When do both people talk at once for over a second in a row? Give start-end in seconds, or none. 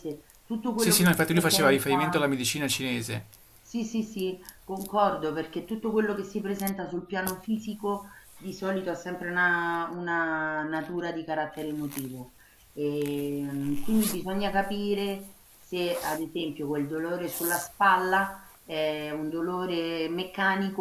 0.7-2.4